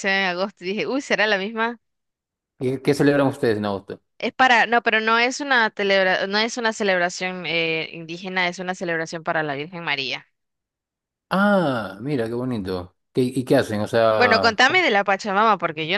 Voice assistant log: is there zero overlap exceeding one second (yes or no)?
yes